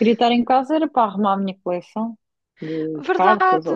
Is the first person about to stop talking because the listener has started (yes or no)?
yes